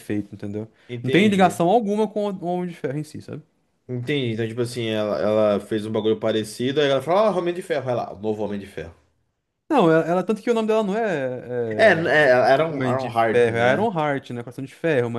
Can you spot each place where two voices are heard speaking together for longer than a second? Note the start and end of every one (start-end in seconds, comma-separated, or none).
11.8-13.9